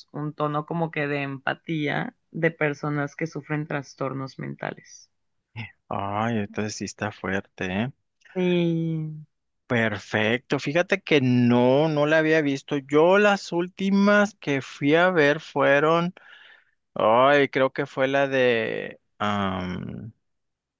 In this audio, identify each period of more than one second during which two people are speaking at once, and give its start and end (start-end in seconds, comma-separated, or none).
none